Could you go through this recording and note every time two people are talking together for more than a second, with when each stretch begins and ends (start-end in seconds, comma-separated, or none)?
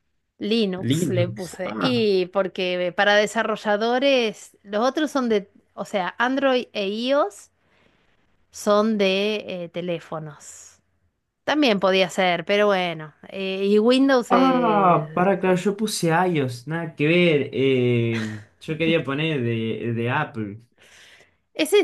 0.8-2.1, 14.3-15.7